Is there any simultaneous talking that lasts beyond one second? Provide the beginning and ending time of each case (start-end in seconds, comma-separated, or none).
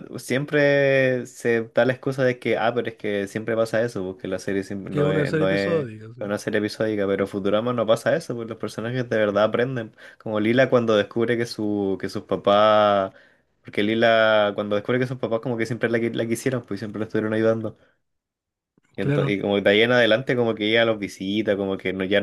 4.9-6.2